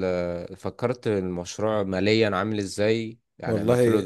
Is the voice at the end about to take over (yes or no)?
yes